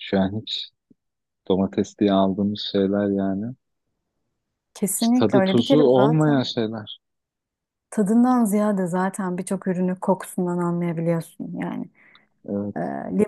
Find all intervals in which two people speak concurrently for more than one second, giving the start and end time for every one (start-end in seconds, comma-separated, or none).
5.0-6.5